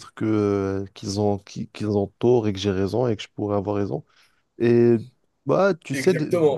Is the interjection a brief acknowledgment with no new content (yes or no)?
no